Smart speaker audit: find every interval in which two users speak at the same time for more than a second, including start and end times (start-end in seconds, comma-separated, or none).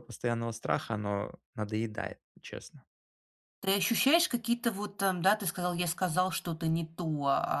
none